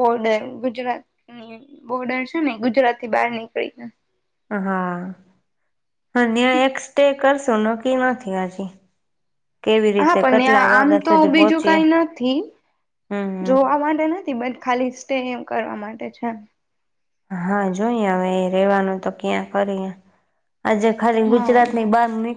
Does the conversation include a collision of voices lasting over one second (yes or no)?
yes